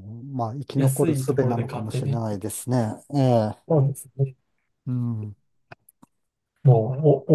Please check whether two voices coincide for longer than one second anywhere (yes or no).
yes